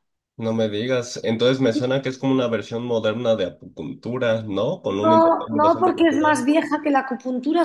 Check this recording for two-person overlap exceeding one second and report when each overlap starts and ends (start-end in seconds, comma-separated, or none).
5.0-6.5